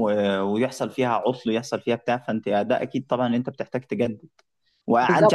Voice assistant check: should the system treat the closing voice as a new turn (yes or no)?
no